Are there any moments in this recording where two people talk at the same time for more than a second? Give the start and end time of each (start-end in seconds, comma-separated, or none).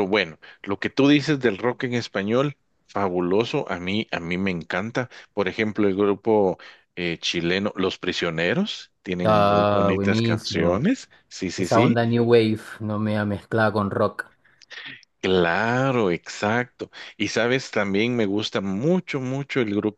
9.2-10.9